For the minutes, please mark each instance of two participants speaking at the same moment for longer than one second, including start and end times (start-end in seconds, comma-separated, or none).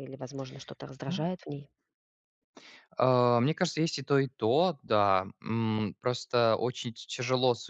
none